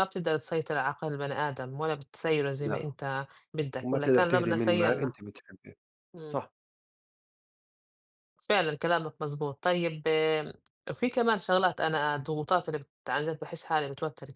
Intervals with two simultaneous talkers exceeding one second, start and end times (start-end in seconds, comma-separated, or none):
3.8-5.2